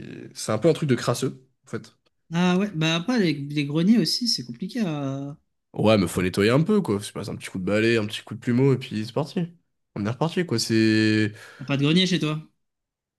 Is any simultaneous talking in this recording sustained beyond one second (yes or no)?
no